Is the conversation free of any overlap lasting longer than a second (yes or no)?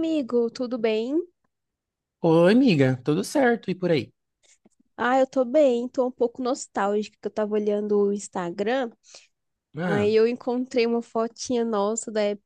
yes